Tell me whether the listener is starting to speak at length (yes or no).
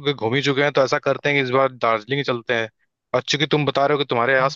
no